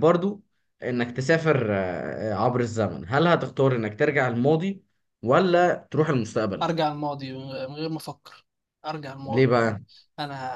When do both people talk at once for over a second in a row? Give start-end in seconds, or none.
none